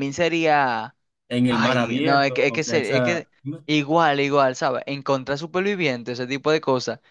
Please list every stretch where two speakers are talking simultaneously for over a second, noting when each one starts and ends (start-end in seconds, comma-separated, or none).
1.5-3.2